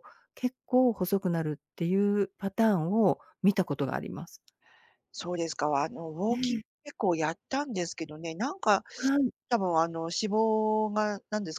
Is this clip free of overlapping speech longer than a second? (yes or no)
yes